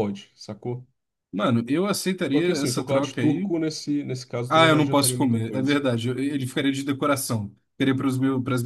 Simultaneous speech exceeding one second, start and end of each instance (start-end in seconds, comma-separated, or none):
2.3-3.5, 4.5-5.8